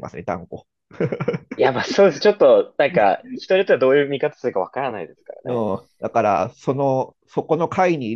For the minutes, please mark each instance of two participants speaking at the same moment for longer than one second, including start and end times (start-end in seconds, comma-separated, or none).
none